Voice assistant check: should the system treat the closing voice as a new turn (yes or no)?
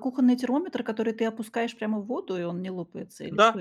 yes